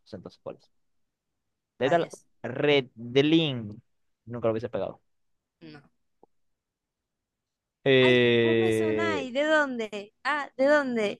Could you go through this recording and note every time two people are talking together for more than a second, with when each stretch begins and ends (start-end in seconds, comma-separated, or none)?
8.0-9.3